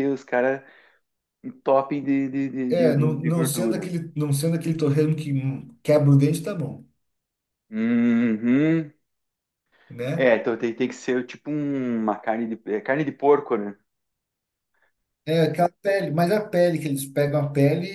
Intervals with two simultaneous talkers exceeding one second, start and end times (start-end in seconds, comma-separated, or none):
2.7-3.9